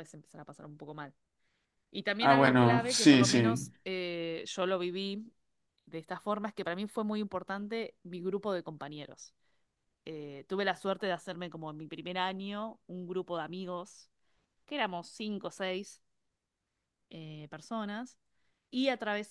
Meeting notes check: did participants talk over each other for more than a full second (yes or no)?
yes